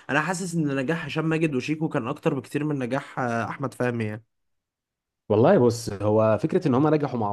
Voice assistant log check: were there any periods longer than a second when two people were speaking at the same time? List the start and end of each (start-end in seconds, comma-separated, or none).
none